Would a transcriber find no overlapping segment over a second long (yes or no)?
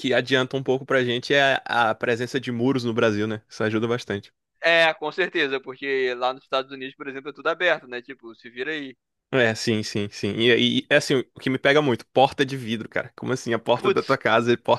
yes